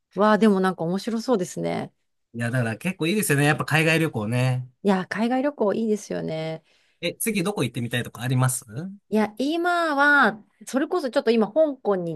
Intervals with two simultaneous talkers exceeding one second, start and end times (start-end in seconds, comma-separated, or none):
none